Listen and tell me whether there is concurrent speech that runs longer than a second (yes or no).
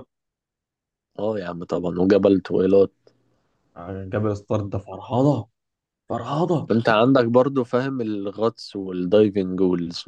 no